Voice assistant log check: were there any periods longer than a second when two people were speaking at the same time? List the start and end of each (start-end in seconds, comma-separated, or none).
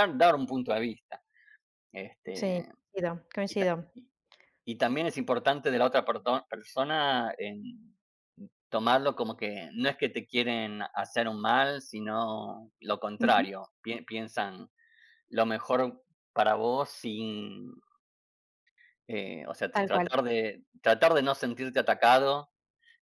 none